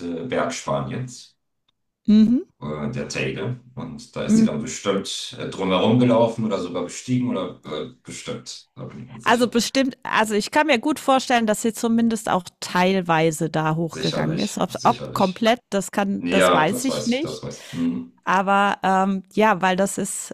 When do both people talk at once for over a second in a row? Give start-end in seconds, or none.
13.9-15.5, 16.2-17.4